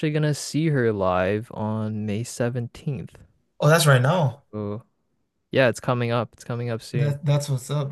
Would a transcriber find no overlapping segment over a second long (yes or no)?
yes